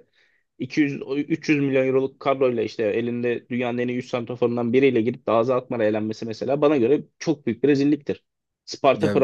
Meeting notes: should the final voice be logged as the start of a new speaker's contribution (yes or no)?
no